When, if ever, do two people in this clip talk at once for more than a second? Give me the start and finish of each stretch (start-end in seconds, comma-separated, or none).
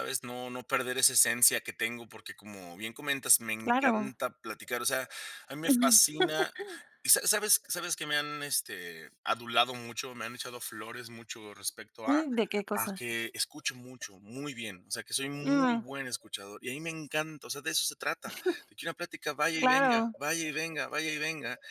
none